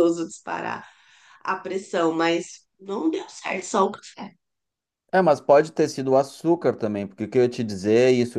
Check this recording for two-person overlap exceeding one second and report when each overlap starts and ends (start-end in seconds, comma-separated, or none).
none